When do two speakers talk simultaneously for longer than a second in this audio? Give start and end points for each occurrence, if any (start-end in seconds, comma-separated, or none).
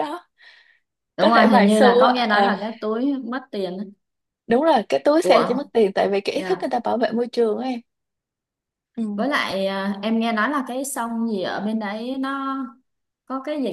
1.2-2.5